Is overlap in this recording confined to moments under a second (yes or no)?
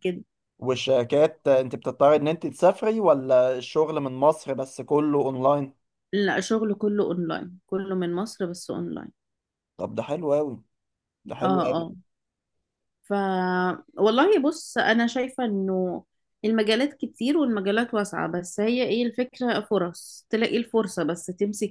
yes